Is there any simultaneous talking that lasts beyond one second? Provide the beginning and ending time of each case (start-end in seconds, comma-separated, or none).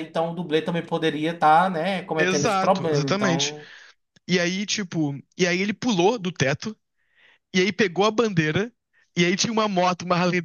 2.2-3.5